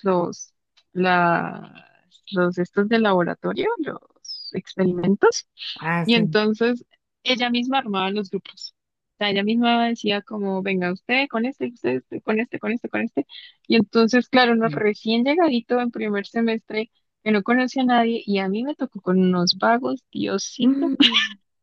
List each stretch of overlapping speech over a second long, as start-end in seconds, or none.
none